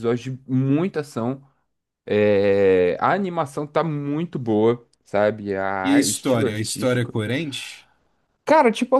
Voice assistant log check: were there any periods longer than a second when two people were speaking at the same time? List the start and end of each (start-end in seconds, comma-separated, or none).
5.8-7.2